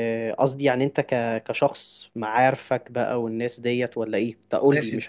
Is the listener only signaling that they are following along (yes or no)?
no